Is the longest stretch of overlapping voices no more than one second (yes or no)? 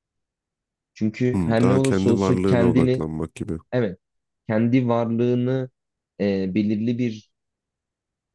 no